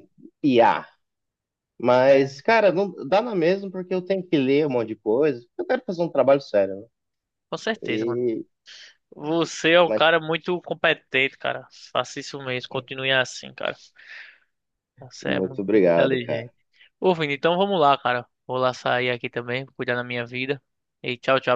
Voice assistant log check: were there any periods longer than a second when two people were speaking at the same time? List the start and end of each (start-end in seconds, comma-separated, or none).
15.3-16.5